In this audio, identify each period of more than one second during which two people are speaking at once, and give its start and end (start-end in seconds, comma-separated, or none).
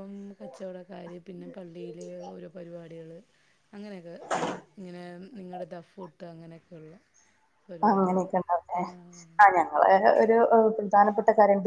none